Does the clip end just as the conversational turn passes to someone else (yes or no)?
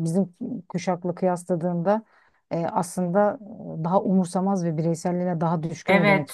yes